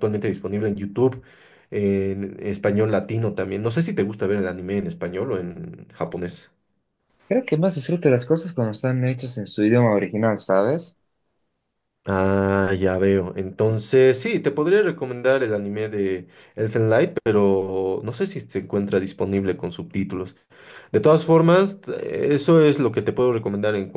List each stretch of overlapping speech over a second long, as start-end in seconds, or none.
none